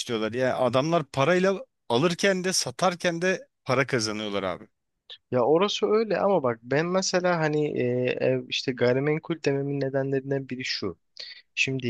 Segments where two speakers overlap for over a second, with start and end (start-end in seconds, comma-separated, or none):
none